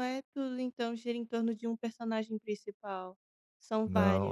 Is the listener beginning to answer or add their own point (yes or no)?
yes